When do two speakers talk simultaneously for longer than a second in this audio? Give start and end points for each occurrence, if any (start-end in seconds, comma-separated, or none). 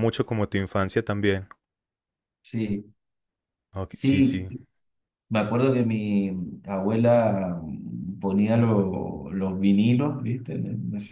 none